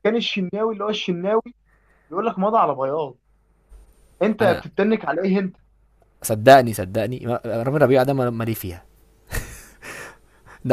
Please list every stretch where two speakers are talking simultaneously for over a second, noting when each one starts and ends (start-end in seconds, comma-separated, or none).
none